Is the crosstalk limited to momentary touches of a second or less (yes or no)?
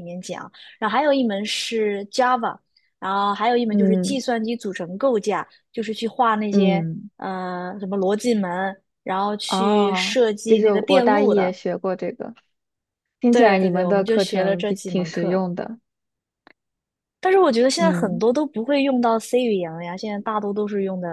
no